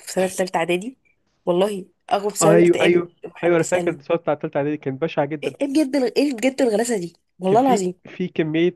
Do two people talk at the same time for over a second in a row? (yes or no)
yes